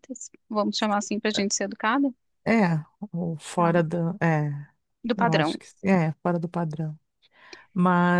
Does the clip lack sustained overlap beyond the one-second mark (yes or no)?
yes